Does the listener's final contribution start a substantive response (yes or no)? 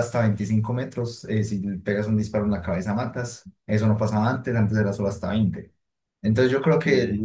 no